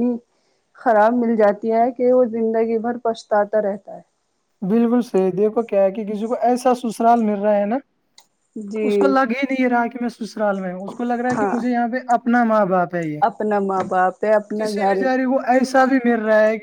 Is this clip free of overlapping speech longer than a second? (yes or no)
yes